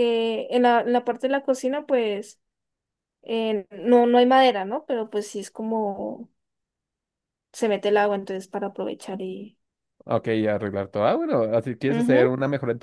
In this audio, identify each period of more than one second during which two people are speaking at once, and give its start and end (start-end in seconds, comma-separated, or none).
none